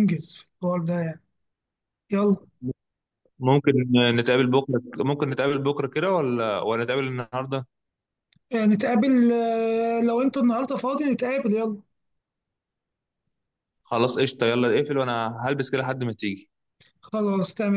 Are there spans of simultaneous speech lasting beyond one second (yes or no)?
no